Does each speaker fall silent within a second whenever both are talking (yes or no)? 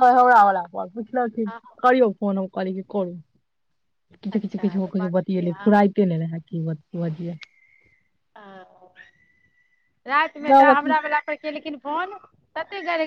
no